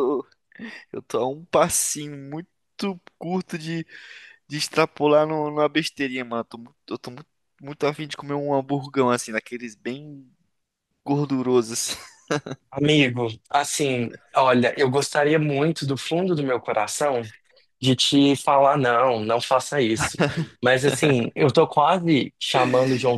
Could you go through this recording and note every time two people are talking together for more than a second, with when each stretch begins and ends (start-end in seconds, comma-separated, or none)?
none